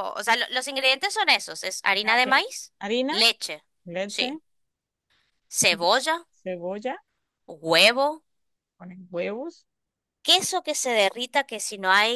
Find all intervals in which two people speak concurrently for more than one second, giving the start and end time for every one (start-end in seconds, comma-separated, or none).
none